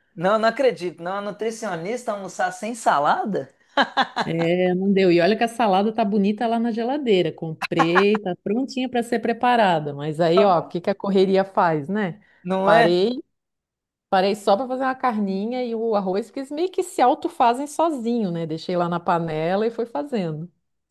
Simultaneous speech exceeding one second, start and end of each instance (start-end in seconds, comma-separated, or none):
none